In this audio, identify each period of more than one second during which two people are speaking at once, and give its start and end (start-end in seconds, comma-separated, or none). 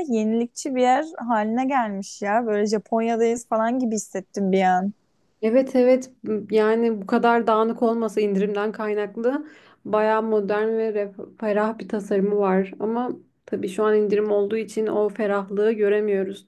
none